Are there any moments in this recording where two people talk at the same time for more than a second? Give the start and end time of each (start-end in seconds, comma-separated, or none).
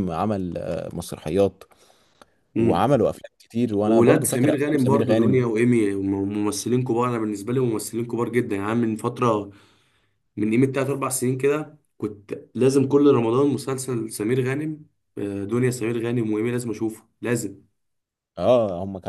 3.9-5.5